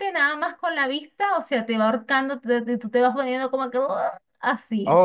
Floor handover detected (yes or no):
yes